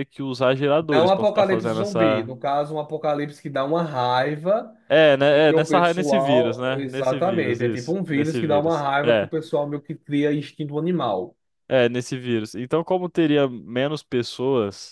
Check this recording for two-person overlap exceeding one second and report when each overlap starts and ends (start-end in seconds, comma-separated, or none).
0.9-2.3, 5.3-9.3